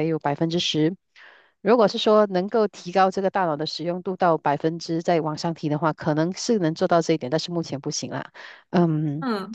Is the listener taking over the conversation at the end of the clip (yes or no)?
no